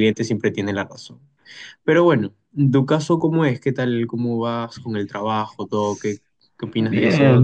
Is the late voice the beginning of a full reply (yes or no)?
yes